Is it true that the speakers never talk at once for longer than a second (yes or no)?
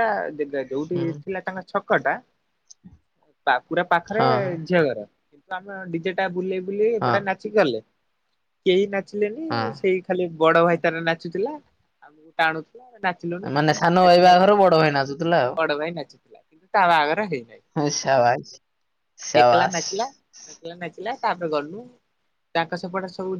yes